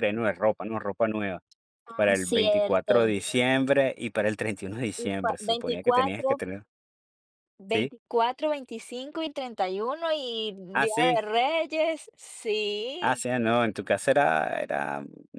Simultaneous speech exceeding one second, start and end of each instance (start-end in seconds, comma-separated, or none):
1.9-3.1, 5.0-6.4